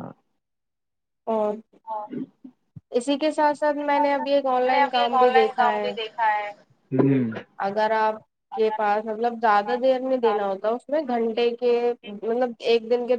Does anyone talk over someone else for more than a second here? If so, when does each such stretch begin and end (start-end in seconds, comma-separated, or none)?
4.1-5.9